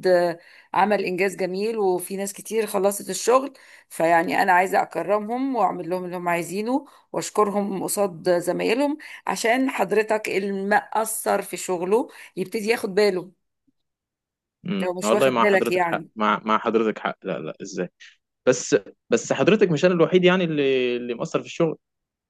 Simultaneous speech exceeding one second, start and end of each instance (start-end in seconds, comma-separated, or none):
14.8-16.1